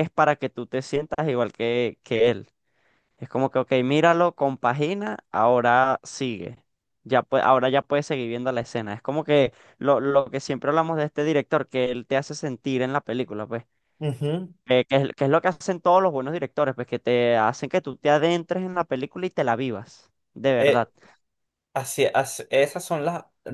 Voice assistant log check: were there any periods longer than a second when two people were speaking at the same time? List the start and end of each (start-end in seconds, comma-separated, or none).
none